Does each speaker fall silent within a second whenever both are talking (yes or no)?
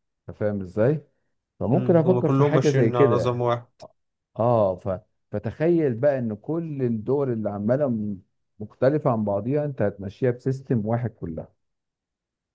no